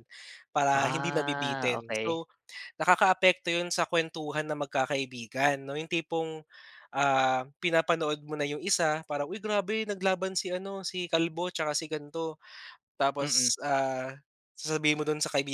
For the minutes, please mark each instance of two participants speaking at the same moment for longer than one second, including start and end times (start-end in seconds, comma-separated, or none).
0.7-2.2